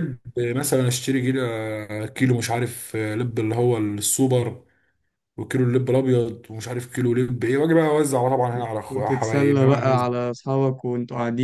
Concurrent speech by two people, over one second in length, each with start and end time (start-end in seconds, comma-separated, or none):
8.6-10.1